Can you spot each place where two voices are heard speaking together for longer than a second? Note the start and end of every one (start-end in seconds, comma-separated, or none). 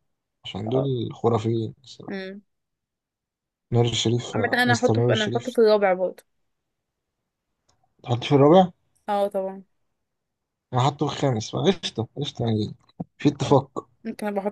4.3-5.5